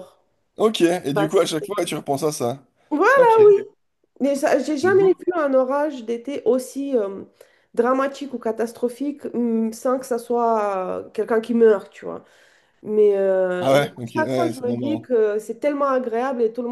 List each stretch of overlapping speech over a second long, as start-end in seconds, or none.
13.6-15.1